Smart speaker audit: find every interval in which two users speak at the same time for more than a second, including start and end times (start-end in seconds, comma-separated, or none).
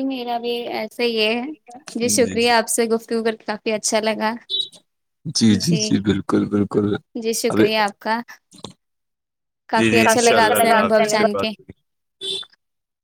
9.8-11.5